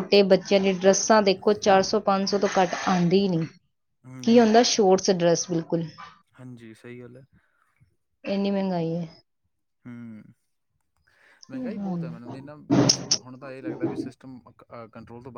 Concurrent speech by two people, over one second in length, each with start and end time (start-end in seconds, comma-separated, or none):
none